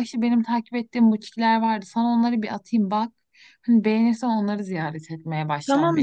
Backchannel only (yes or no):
no